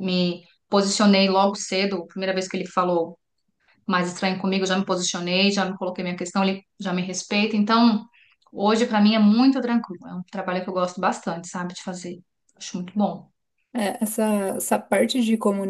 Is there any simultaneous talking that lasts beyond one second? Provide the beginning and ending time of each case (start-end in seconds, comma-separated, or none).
none